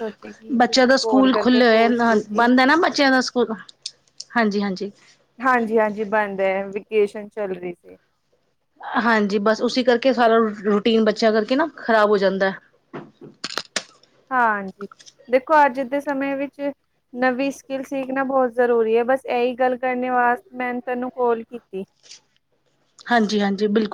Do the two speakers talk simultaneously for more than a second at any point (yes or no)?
yes